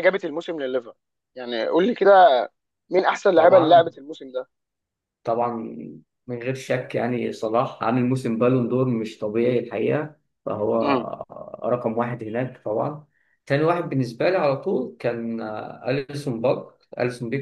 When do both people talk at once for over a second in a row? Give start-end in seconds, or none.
none